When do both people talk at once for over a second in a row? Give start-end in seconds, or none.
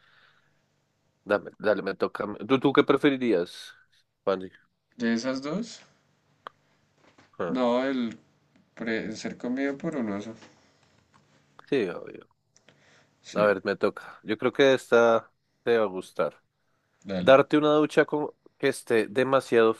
none